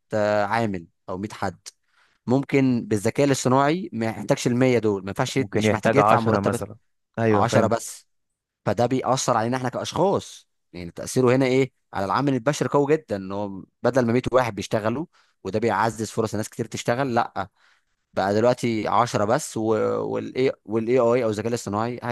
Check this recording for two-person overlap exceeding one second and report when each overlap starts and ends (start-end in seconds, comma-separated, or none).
5.4-6.6